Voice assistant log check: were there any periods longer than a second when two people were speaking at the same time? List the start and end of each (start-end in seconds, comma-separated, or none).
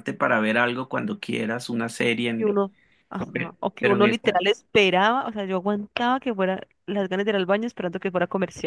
none